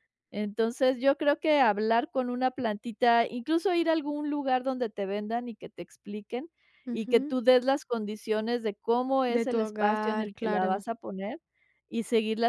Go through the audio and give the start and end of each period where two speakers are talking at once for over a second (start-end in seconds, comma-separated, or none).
9.3-10.8